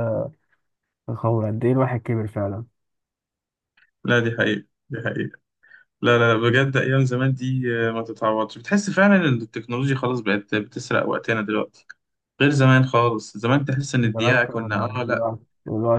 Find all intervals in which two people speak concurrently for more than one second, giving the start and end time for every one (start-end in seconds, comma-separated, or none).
14.0-15.3